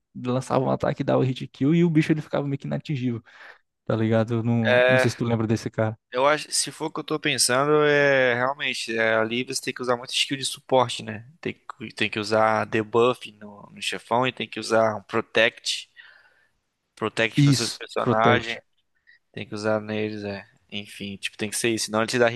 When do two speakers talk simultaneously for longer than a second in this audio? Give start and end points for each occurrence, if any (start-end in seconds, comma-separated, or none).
17.4-18.6